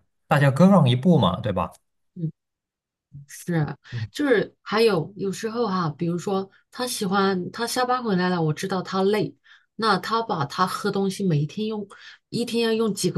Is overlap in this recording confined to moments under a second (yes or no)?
yes